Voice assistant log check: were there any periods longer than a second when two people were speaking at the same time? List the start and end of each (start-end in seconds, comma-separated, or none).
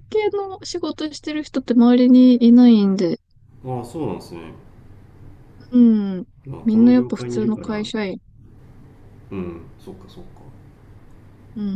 6.6-7.8